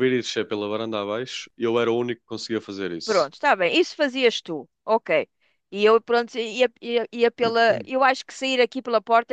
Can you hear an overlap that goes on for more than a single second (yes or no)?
no